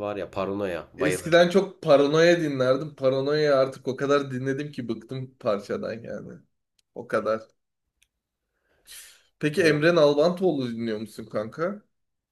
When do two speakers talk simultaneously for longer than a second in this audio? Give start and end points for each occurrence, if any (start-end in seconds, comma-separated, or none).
none